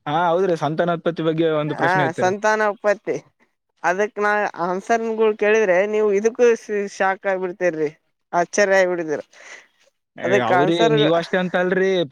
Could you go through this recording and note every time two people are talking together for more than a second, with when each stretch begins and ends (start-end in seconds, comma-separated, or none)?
none